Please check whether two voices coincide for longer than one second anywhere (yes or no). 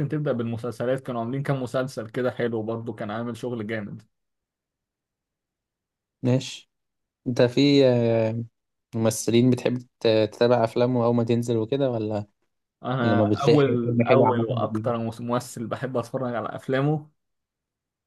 yes